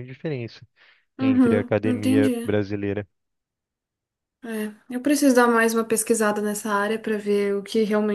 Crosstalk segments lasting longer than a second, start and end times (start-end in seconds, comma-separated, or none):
1.2-2.5